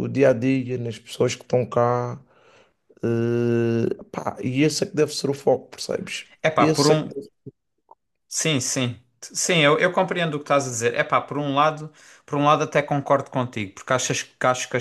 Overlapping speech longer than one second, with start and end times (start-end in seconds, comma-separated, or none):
none